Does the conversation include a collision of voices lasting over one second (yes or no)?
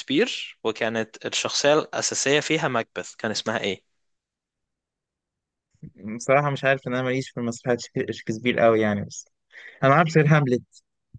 no